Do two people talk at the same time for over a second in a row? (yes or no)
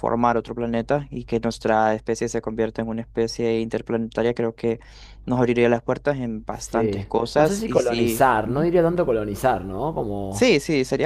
yes